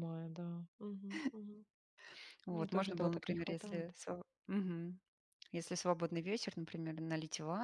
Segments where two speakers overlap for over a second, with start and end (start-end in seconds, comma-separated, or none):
2.5-3.9